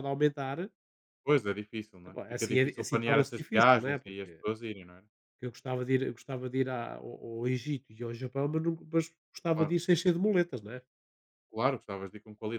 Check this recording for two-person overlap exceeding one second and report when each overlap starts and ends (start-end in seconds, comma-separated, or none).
2.1-4.4